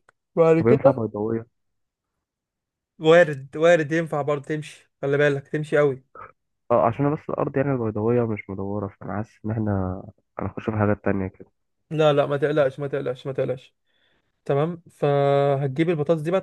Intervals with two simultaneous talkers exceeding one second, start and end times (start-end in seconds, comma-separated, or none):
none